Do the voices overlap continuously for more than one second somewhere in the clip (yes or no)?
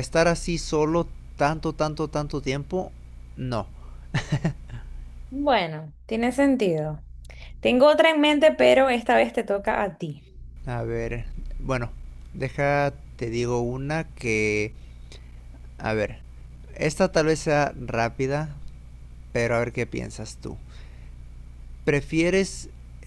no